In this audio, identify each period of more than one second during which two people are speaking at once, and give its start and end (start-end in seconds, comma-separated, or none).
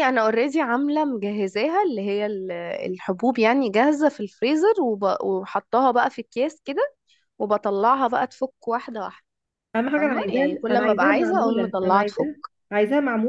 10.0-12.0